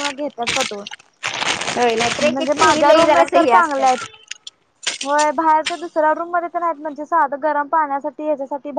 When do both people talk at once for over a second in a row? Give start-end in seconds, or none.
2.3-4.0